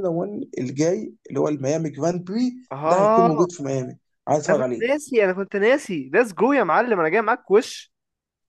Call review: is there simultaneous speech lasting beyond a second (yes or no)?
no